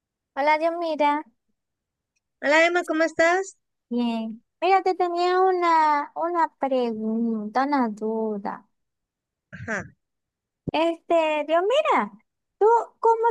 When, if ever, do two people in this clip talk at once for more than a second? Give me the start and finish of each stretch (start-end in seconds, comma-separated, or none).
none